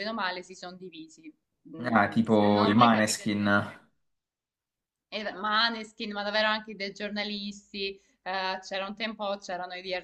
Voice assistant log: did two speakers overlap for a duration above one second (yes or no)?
yes